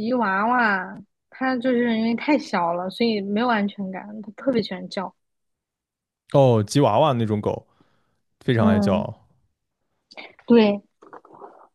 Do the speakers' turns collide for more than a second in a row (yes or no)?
no